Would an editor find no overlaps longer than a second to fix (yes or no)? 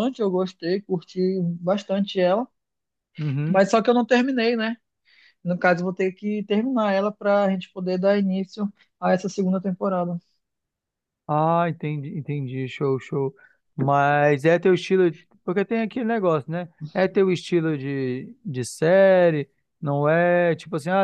yes